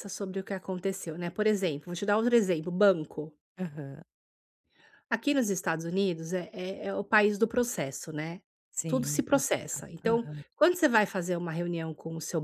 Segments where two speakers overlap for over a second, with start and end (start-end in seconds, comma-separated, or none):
8.9-10.4